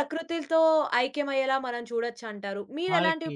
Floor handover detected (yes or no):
no